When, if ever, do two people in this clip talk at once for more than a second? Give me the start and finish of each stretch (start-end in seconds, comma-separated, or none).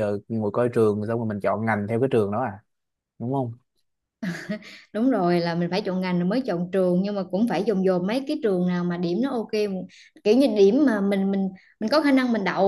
none